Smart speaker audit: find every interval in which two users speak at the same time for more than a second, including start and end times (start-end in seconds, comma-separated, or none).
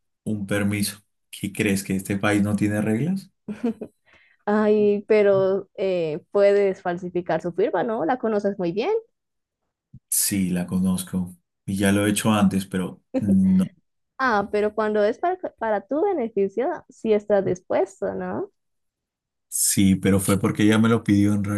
none